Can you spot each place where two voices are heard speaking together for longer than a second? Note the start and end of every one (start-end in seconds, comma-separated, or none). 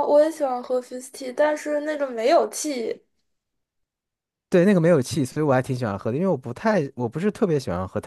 none